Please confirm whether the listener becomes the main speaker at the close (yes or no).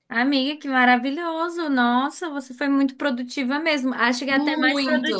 no